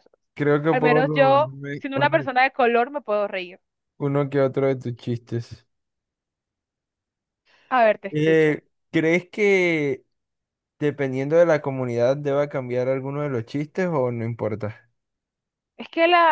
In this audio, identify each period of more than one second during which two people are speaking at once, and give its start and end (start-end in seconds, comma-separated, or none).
0.7-2.3